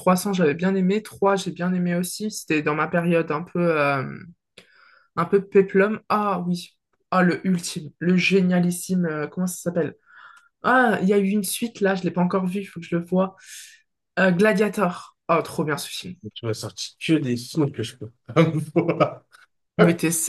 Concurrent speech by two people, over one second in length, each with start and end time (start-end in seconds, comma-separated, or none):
none